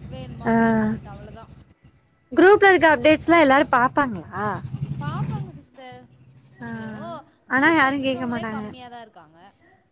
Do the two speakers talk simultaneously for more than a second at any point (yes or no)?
no